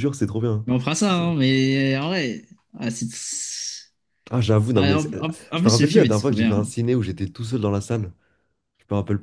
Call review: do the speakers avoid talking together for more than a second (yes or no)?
no